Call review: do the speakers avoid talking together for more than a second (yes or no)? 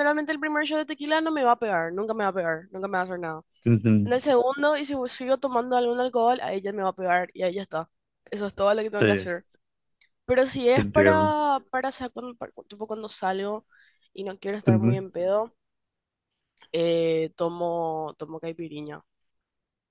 yes